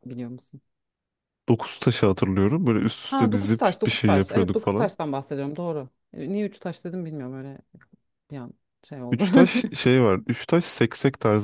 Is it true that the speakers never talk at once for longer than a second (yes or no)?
no